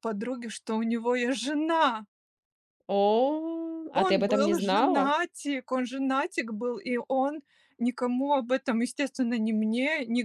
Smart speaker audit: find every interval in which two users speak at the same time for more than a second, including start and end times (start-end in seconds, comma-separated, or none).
3.9-5.2